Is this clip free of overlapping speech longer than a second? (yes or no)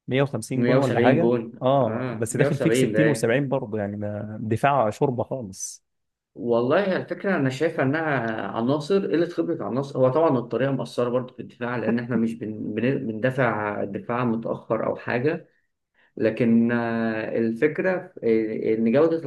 no